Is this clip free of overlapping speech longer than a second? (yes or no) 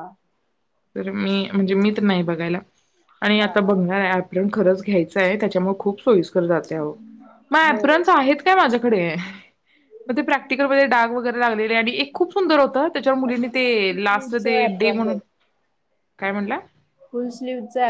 no